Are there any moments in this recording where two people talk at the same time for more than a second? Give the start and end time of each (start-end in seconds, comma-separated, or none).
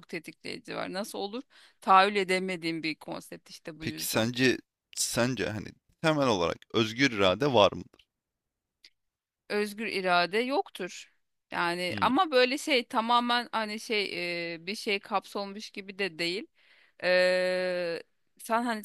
none